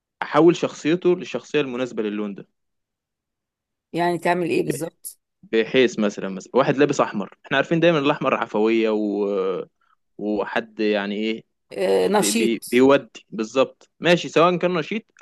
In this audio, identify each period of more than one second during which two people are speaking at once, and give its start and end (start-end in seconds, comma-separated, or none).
none